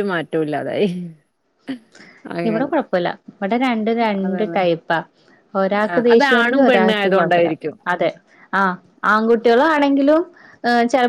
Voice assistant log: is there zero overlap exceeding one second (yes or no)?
no